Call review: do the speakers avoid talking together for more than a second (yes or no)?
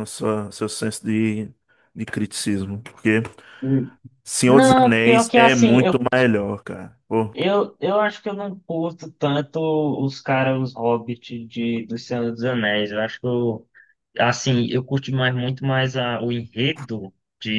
no